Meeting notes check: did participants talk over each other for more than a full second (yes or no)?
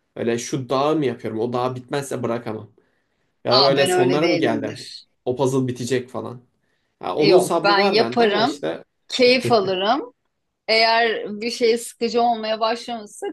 yes